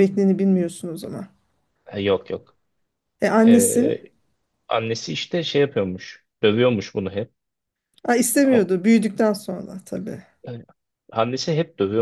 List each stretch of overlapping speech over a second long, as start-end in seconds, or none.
none